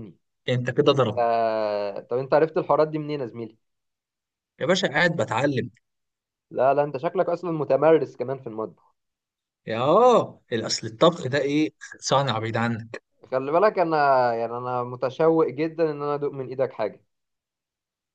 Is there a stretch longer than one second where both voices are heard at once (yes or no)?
no